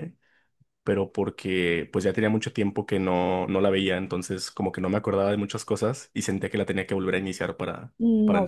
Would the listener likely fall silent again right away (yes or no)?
no